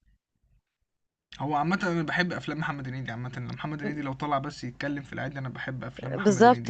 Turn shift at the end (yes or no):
yes